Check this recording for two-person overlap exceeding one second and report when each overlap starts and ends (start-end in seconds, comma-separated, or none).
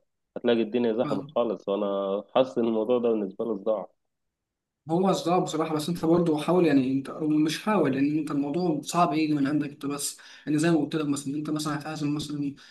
none